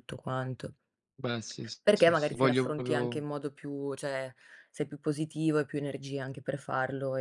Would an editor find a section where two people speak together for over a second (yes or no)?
yes